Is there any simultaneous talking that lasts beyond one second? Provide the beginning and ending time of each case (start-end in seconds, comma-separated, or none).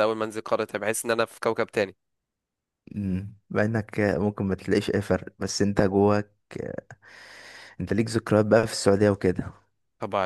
none